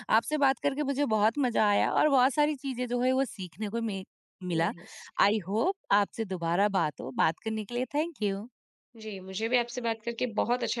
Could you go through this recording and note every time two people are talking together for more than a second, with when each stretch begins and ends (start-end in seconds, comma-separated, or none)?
none